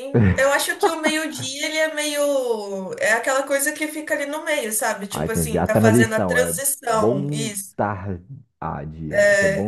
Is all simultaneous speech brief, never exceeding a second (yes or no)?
no